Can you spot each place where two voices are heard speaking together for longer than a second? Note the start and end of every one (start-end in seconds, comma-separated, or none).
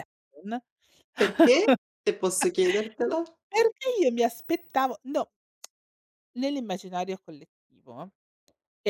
none